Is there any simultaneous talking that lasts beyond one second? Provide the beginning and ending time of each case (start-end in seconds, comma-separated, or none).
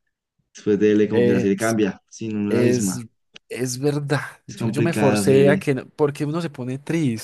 4.5-5.7